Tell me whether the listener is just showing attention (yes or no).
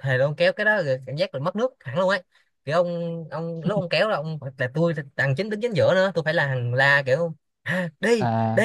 yes